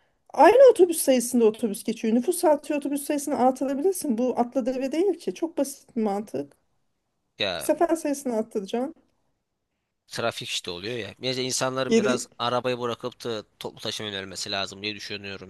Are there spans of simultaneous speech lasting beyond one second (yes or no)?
no